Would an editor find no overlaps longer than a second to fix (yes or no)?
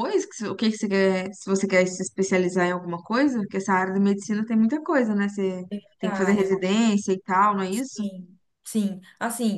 yes